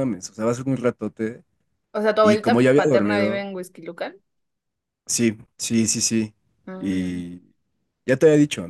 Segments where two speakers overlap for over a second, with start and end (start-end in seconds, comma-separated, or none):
2.2-3.5